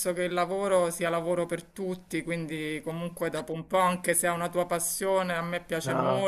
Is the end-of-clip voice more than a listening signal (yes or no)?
no